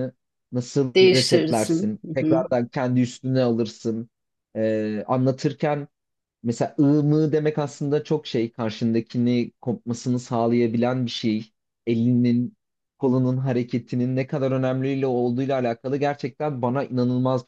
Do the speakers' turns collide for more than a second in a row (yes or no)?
yes